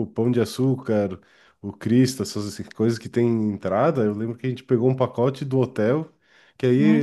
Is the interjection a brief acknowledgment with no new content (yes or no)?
yes